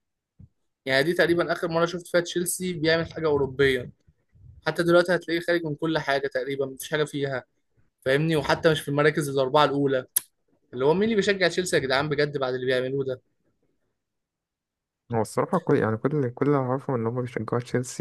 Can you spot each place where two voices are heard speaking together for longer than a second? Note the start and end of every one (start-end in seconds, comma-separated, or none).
none